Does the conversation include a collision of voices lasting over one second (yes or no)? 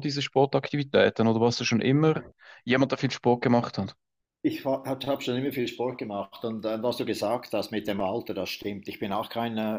no